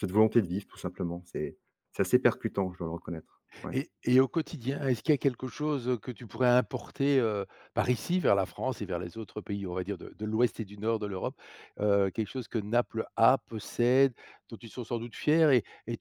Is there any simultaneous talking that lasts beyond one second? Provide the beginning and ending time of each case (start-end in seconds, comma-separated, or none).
none